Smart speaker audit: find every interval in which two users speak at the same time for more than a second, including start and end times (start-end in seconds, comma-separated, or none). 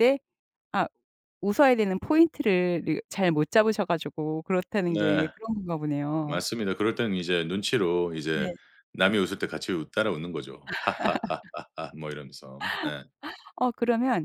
none